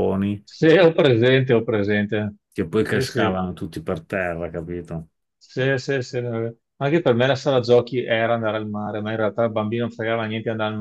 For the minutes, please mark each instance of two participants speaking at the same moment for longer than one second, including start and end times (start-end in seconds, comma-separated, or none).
none